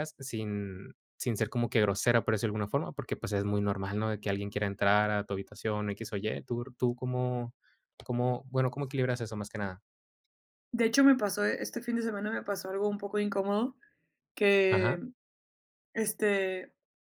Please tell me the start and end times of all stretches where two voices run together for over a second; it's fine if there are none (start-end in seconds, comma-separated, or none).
none